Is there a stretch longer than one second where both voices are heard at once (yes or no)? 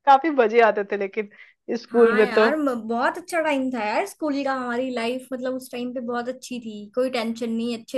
no